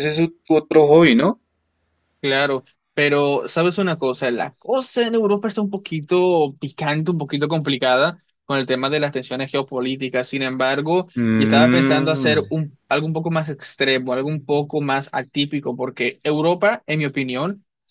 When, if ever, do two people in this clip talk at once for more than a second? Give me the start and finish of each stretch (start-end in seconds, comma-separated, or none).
11.2-12.4